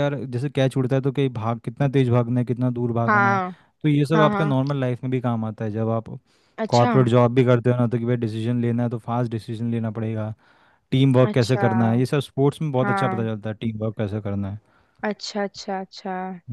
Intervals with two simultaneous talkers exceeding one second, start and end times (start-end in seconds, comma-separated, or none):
none